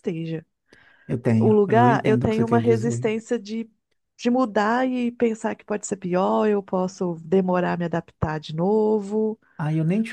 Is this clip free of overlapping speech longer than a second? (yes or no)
no